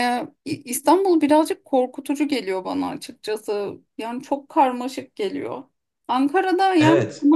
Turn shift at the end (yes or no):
no